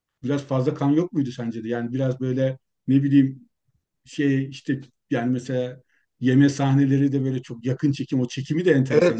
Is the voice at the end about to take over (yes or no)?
yes